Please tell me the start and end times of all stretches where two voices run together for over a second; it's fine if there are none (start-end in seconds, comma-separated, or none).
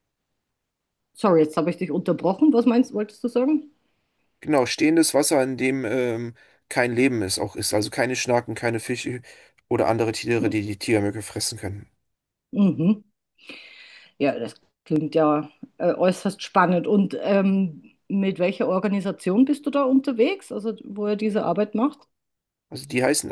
none